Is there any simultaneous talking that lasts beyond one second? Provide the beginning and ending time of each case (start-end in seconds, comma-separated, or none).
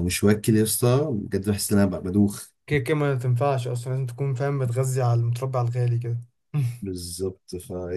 none